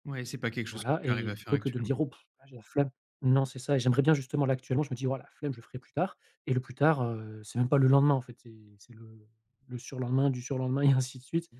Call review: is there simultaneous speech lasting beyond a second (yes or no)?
yes